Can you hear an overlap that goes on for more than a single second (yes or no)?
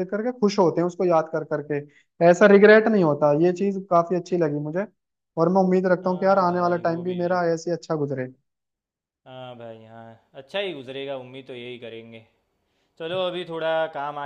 yes